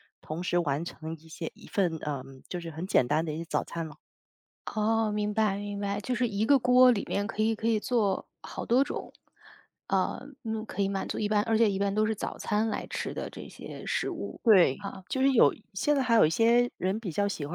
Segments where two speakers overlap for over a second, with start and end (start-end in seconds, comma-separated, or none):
none